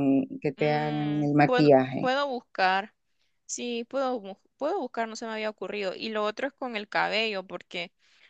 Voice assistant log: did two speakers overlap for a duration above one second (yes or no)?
yes